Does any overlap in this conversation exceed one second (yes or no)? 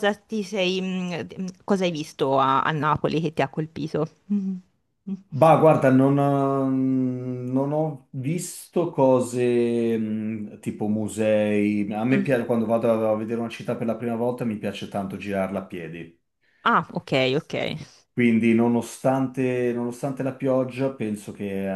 no